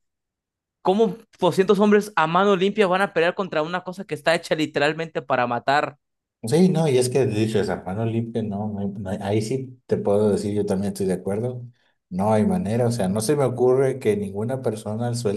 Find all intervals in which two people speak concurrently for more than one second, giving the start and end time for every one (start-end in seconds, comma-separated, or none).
none